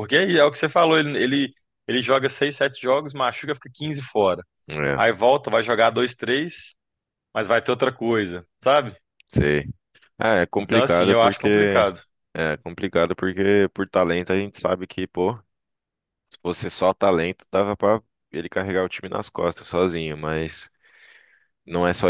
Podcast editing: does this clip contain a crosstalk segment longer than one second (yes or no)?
yes